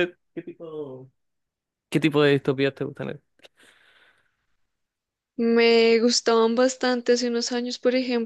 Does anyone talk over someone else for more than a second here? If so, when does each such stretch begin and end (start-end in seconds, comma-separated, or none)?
none